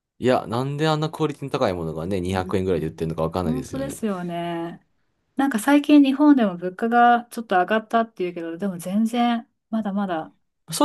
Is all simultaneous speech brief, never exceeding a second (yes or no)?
no